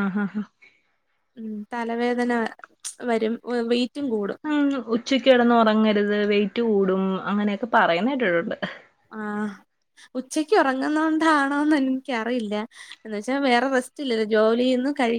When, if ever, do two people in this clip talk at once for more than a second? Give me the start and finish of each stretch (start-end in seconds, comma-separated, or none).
none